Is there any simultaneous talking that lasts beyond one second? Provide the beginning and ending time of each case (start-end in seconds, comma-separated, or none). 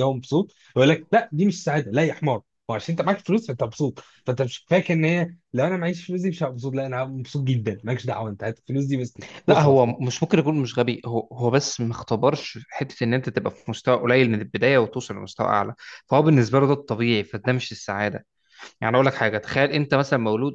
none